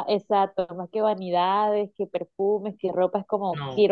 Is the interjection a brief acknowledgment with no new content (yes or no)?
yes